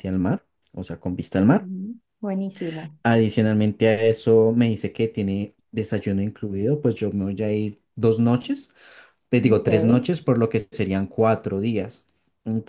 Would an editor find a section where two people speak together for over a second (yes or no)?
no